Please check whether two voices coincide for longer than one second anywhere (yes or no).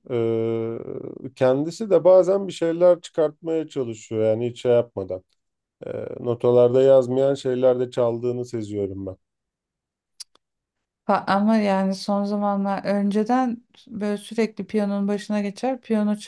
no